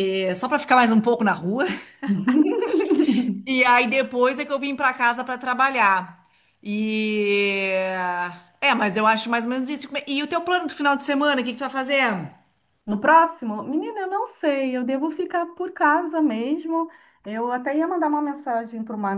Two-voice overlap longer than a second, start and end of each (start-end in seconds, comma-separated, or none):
none